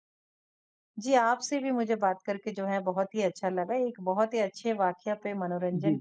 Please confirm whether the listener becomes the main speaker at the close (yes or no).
no